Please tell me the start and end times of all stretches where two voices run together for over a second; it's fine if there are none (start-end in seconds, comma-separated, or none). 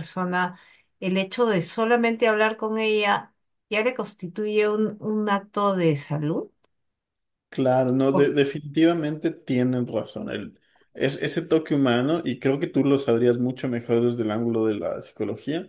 none